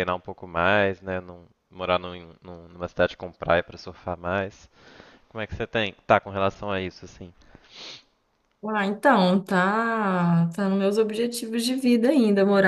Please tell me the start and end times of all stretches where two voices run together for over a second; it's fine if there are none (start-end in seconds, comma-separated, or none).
none